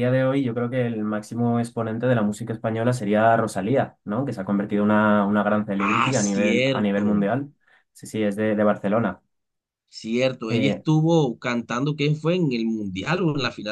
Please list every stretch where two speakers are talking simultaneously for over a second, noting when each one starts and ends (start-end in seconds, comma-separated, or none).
5.8-7.3